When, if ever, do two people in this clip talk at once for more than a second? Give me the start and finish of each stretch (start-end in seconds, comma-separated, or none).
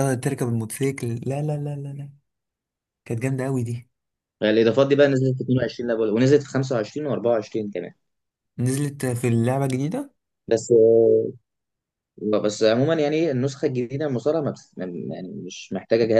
none